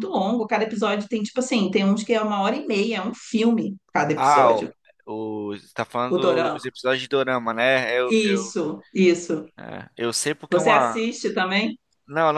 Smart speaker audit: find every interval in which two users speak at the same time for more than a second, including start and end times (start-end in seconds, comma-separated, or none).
none